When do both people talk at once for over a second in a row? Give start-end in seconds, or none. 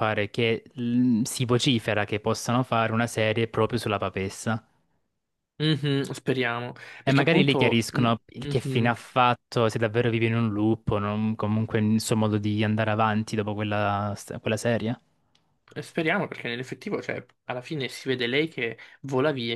7.0-9.0